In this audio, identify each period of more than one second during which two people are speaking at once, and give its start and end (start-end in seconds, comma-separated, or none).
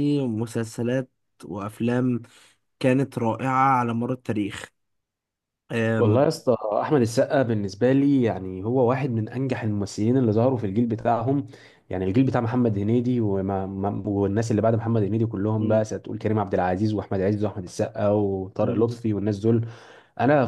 none